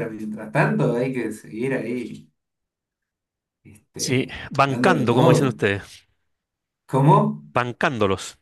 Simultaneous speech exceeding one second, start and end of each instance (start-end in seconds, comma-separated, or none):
4.0-5.5